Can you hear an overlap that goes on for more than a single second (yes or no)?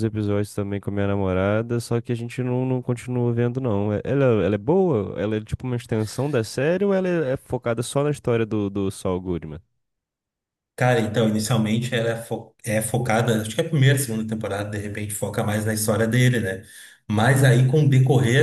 no